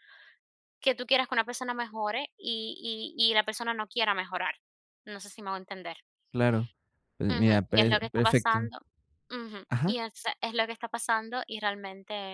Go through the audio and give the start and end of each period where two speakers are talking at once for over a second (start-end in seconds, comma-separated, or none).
7.3-8.7